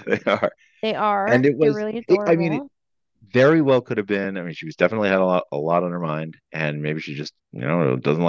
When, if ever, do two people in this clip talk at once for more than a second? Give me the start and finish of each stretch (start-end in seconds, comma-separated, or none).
1.2-2.6